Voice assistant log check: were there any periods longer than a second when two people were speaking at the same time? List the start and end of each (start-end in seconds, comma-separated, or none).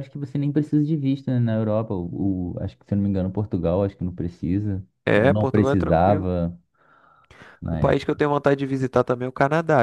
5.1-6.3